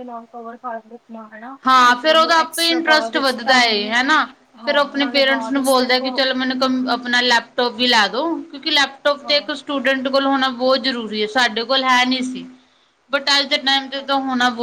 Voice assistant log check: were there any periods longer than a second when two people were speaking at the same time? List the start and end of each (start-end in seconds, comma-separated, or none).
2.0-3.9, 4.7-6.1